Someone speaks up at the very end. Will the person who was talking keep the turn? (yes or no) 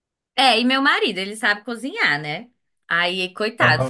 yes